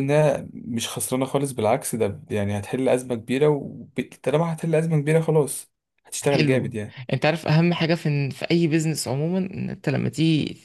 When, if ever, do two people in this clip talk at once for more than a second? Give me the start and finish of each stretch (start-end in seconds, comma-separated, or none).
none